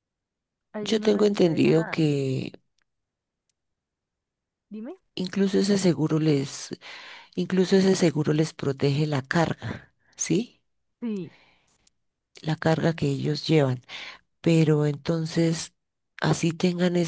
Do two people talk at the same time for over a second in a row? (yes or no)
yes